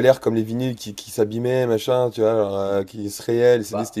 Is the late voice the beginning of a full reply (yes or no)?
yes